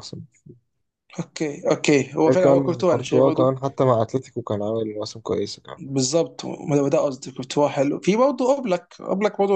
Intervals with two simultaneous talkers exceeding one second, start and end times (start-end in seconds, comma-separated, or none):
2.3-3.5